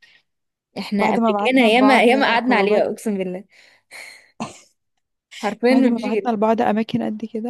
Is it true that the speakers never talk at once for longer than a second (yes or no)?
no